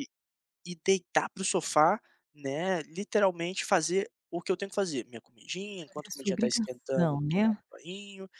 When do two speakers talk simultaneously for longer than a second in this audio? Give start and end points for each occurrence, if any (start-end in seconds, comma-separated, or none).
5.8-7.5